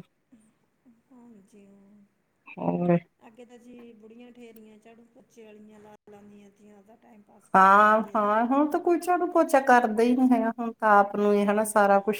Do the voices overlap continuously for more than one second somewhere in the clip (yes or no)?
no